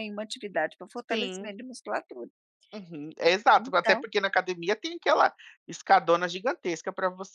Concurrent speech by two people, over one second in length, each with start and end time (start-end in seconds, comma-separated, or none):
none